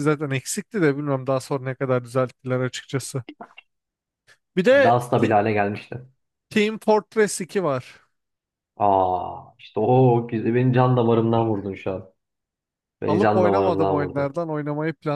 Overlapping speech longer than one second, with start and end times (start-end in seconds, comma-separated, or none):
13.1-14.4